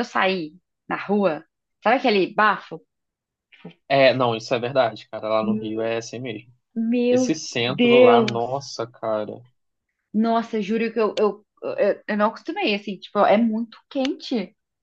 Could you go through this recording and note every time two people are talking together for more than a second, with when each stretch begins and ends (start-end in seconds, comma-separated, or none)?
7.1-8.6